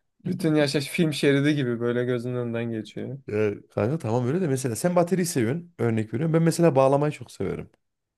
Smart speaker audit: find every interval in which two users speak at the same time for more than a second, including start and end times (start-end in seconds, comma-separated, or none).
none